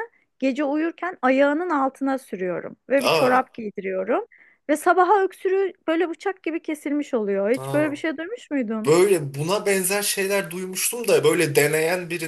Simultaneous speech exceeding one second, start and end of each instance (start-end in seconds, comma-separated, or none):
none